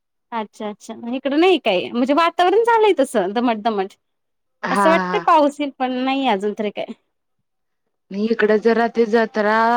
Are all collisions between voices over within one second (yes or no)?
yes